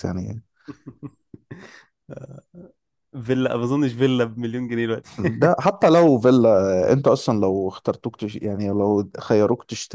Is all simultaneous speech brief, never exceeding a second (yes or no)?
yes